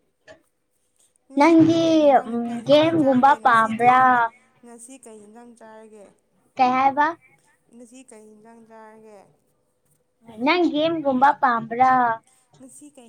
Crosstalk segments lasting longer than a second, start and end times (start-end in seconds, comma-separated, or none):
2.5-4.0